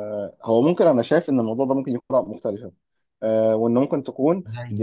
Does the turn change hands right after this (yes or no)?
no